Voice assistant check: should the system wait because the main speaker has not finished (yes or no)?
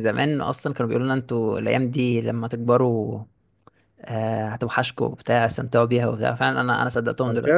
no